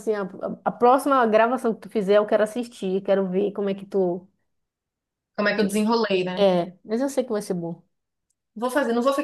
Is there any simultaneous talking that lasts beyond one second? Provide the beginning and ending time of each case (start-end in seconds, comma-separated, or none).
none